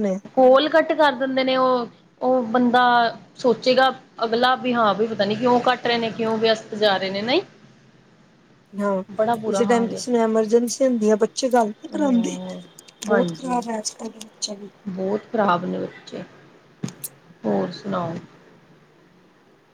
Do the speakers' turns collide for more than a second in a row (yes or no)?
no